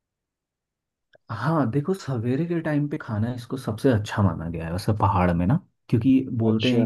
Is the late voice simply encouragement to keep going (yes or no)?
yes